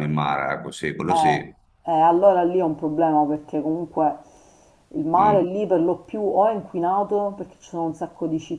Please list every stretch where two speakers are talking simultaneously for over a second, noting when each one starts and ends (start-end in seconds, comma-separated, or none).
none